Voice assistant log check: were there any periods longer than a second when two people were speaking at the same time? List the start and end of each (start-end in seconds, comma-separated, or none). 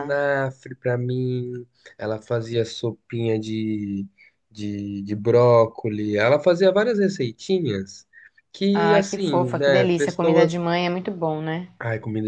8.7-10.6